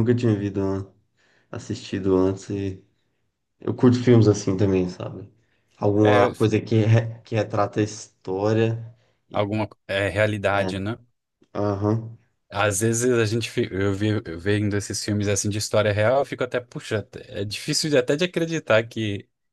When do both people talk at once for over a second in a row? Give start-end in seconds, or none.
none